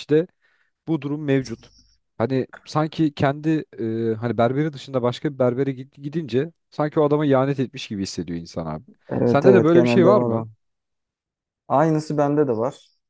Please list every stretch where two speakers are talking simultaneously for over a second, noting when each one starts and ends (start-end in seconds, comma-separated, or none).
9.2-10.5